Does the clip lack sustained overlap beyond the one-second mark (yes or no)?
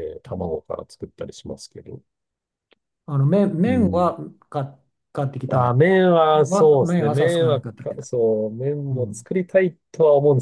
no